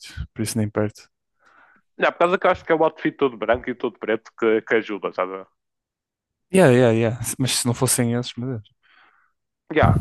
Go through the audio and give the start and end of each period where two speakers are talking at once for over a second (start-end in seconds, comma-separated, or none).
none